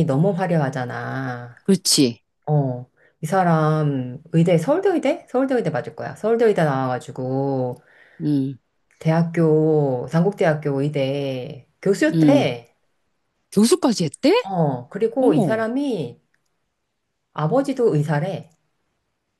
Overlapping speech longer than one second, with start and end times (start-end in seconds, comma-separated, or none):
none